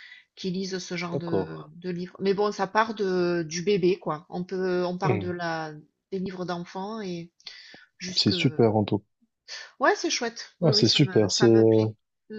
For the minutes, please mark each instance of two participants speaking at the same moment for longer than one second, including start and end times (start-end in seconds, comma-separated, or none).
10.6-11.8